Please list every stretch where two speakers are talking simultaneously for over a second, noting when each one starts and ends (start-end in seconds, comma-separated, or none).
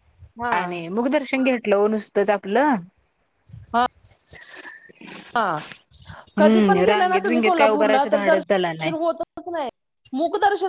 6.4-9.1